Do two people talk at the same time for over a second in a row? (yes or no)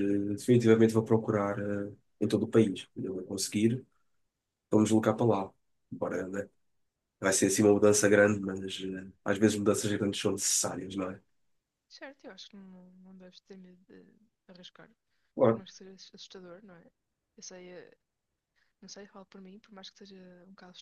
no